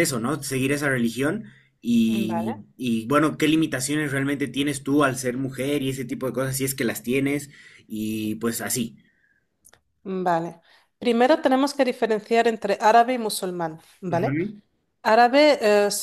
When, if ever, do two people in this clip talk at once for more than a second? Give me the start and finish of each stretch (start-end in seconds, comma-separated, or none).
none